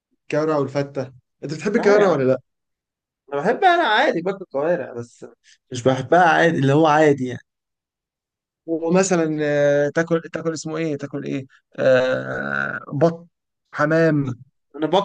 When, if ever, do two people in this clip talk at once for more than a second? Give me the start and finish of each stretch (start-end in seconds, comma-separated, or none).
none